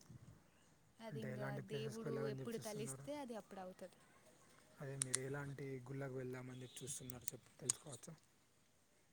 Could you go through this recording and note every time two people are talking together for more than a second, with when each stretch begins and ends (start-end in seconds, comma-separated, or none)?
1.1-3.1